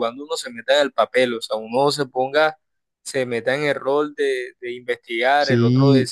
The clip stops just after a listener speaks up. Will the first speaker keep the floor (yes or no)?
no